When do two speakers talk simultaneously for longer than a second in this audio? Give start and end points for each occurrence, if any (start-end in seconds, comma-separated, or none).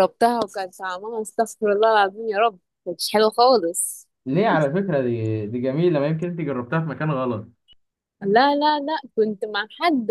none